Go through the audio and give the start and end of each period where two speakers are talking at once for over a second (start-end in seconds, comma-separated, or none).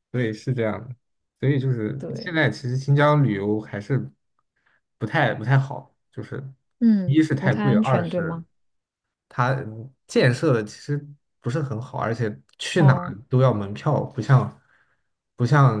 7.0-8.4